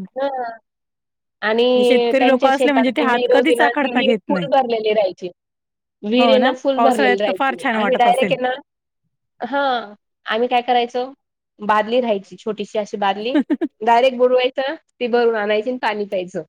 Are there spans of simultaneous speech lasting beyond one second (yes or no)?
yes